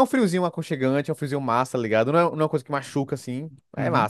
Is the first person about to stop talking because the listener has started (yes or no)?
yes